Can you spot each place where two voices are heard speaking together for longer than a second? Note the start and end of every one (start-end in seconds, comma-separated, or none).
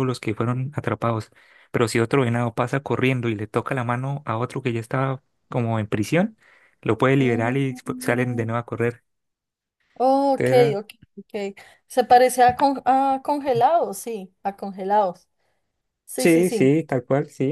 7.2-8.5